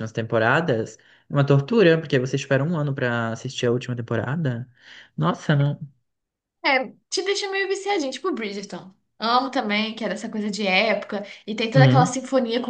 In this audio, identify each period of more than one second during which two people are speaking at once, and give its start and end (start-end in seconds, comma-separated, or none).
none